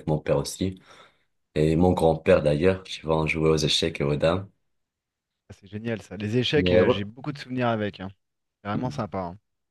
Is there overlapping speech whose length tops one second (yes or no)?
no